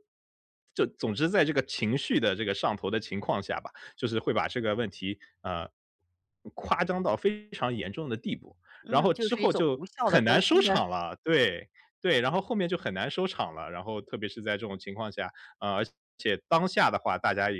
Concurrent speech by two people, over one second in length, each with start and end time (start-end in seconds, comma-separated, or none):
8.8-10.8